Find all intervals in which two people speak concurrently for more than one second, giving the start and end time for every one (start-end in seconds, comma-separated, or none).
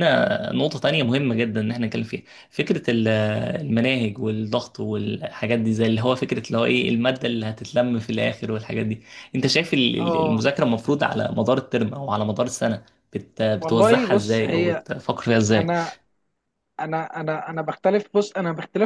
13.6-14.8